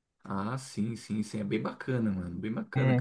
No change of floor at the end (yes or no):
no